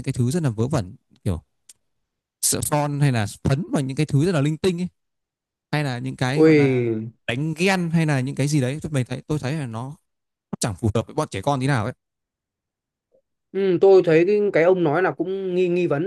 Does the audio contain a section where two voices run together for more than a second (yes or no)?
no